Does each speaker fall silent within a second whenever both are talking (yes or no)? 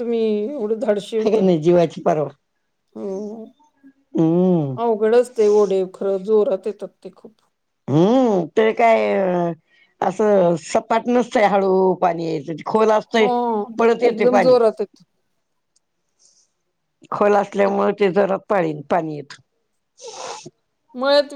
yes